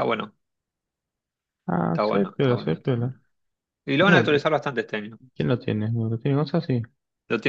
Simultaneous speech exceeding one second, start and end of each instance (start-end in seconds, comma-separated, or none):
1.9-3.1